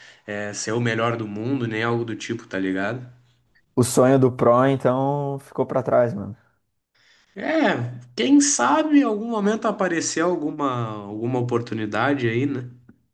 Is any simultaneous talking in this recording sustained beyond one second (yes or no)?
no